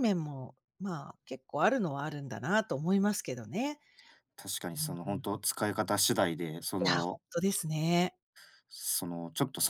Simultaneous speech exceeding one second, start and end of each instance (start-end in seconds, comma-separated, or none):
none